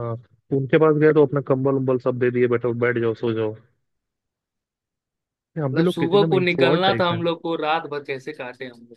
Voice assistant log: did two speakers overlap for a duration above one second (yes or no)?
yes